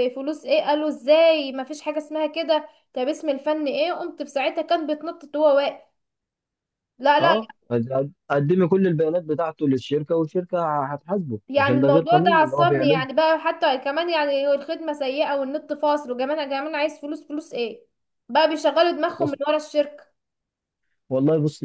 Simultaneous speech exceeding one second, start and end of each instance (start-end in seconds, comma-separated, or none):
11.5-13.1